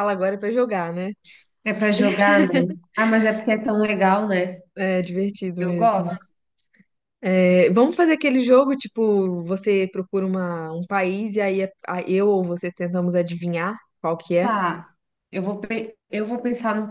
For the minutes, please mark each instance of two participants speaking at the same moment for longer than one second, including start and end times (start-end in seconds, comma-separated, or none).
none